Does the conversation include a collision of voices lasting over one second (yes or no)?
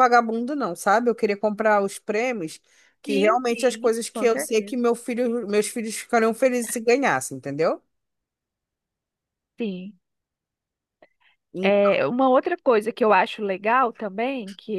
yes